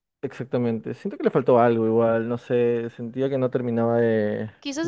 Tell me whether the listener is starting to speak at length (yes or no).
yes